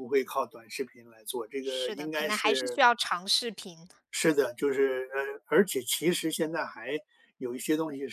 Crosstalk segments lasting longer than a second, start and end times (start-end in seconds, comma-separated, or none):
1.6-2.8